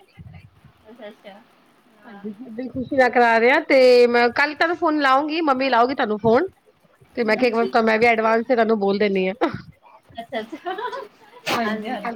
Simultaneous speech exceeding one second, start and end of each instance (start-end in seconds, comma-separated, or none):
none